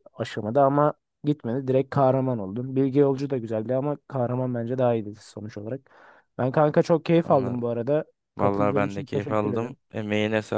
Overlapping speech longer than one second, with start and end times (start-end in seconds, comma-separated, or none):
8.4-9.8